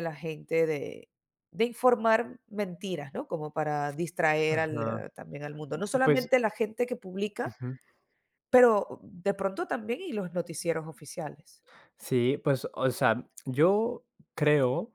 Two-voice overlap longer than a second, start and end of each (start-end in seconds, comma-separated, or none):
none